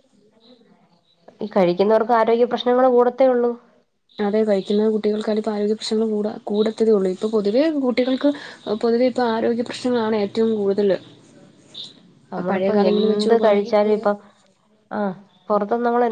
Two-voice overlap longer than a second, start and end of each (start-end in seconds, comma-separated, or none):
12.5-13.9